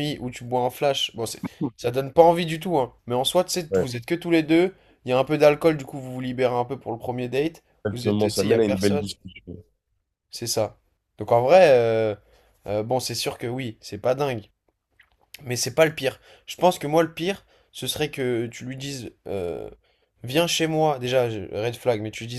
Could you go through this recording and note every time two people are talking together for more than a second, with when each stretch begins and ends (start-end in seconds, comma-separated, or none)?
7.8-9.0